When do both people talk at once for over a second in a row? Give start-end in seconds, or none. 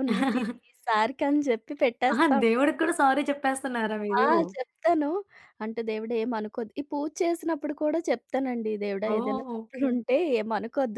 none